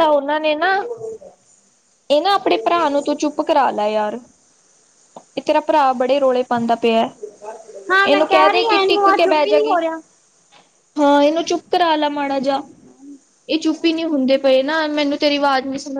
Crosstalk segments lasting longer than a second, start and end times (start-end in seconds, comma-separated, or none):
8.1-9.8